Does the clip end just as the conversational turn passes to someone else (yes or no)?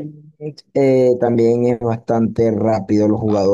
yes